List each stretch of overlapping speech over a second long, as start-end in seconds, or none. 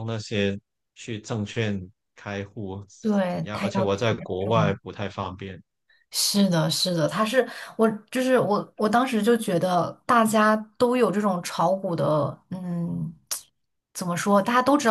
3.3-4.8